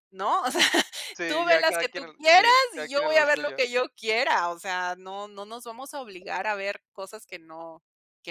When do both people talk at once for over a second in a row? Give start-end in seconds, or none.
1.3-3.6